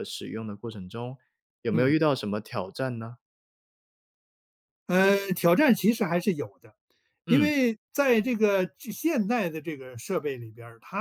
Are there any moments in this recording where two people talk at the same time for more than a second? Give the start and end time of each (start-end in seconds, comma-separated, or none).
none